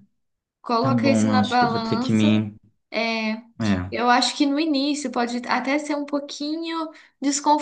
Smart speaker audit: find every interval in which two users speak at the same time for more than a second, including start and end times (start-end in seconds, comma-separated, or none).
0.8-2.2